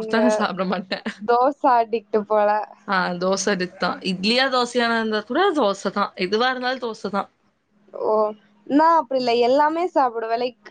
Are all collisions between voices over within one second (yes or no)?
yes